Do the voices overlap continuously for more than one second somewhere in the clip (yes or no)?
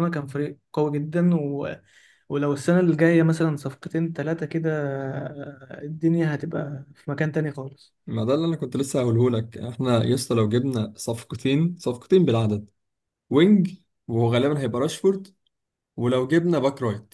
no